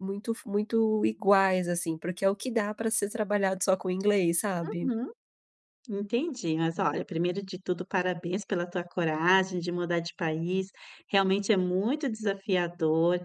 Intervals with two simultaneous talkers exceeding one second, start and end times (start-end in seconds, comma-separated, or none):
none